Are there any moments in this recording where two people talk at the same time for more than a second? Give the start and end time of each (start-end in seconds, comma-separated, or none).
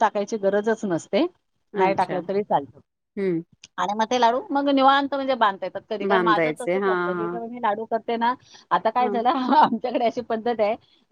6.1-7.5